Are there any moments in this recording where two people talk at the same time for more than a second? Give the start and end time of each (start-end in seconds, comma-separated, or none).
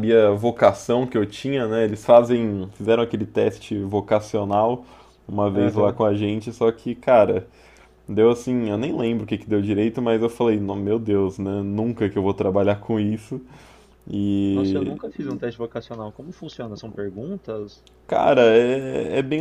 none